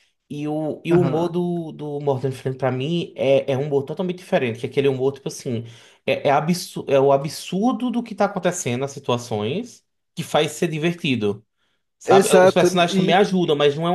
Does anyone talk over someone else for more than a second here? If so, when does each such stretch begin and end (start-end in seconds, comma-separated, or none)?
12.1-13.4